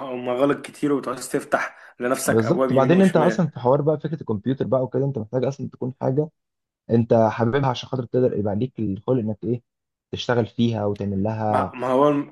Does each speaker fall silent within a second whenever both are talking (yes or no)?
no